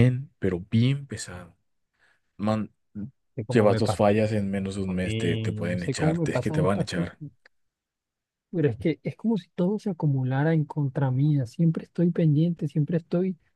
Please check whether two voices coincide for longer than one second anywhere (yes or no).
yes